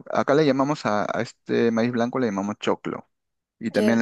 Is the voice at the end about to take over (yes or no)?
no